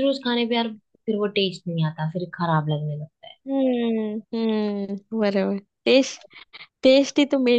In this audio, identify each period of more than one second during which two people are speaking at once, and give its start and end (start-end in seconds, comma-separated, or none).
none